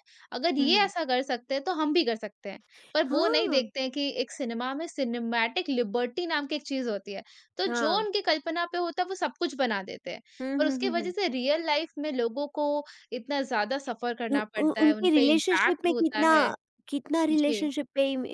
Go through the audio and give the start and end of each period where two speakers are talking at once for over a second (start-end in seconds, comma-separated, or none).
14.3-16.3